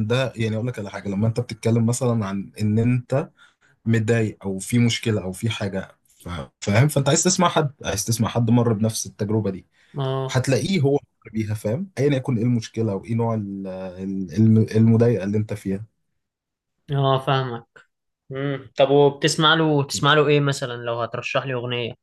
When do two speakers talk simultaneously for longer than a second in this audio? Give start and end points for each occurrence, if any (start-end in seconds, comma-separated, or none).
none